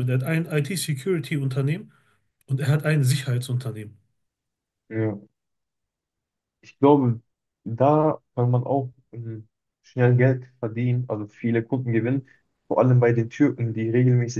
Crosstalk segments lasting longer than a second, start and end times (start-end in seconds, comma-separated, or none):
none